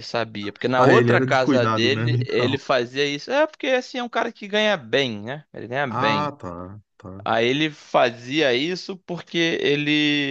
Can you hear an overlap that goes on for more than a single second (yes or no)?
yes